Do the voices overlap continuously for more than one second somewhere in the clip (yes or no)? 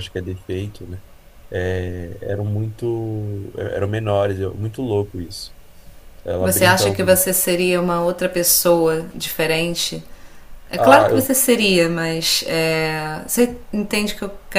no